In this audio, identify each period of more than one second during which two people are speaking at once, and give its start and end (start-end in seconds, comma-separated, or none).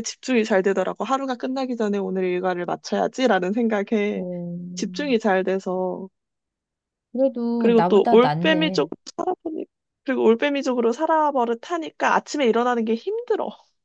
7.6-8.9